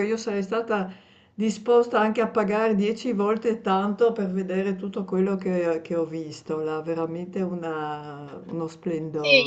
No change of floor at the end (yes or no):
no